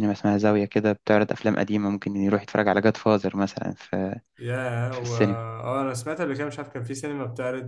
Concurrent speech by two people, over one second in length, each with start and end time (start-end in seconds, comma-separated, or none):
none